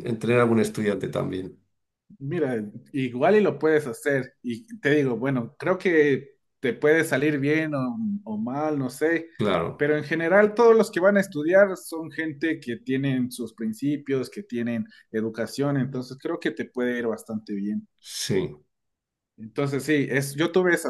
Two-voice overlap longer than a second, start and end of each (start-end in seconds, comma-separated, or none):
none